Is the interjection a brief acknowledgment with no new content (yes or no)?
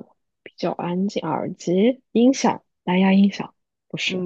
no